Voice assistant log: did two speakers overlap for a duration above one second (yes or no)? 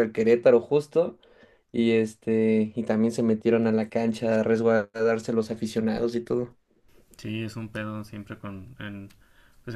no